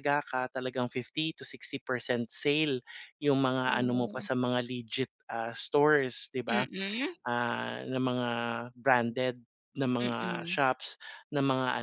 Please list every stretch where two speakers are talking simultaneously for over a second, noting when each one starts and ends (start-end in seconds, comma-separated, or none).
none